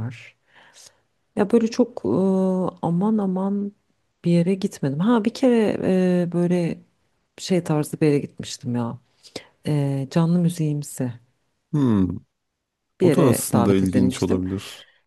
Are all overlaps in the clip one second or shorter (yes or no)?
no